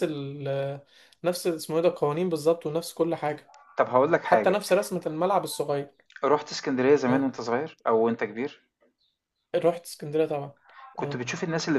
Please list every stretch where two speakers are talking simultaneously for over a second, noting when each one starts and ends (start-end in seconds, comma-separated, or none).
none